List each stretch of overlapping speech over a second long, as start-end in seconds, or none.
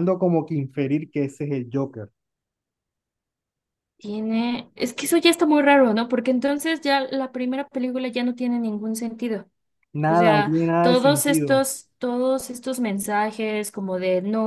10.1-11.6